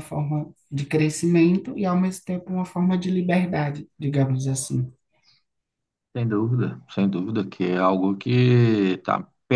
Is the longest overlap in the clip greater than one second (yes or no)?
no